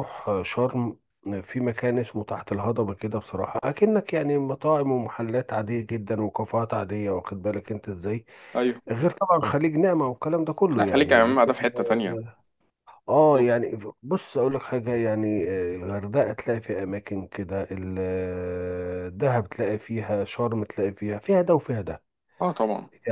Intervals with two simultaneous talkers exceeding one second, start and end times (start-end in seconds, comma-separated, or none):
10.8-12.2